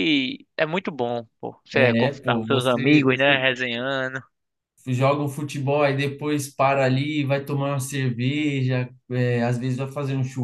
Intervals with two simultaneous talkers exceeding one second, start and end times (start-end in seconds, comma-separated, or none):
1.7-3.4